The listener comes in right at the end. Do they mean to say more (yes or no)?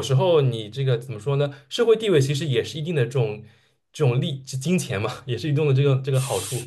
yes